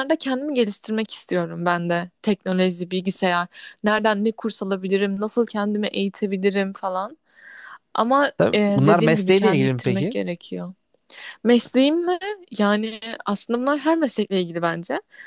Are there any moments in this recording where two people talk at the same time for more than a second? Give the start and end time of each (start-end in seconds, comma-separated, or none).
8.4-10.2